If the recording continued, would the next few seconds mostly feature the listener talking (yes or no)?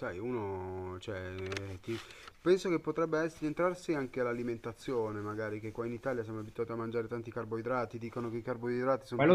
yes